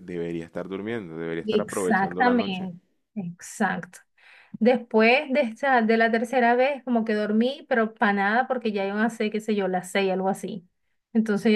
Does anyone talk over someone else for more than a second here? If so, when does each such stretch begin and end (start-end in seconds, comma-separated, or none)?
1.4-2.7